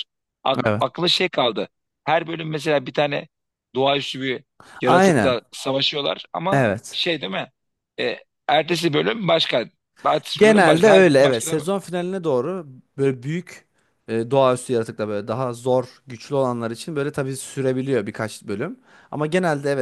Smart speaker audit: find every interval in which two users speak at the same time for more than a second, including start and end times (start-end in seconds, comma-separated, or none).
10.4-11.6